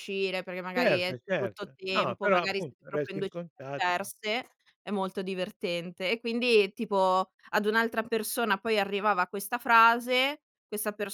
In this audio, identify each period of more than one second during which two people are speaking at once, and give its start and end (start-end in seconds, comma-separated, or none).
0.8-4.1